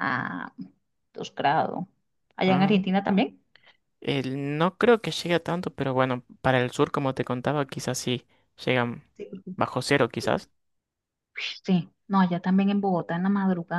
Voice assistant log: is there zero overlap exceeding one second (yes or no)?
yes